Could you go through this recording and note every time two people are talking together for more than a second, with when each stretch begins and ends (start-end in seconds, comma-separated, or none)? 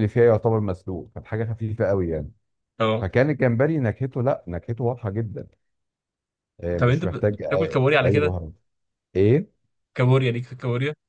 6.8-8.3